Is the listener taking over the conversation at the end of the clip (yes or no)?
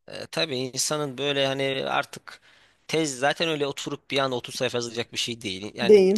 no